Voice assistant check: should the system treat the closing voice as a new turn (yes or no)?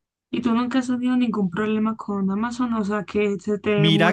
yes